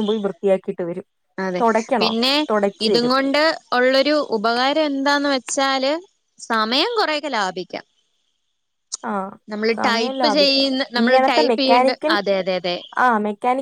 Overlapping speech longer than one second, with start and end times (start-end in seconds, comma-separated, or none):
9.8-12.1